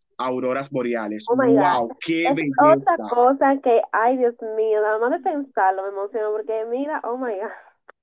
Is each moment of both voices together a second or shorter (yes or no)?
no